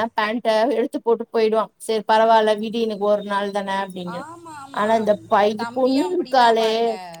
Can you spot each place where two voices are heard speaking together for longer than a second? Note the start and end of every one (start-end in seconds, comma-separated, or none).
none